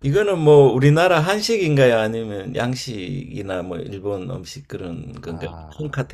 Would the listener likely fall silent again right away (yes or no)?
no